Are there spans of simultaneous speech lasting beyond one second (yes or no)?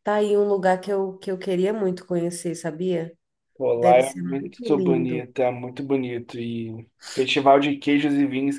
yes